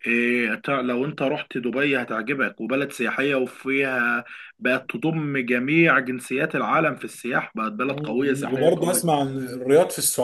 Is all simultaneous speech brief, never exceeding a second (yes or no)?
no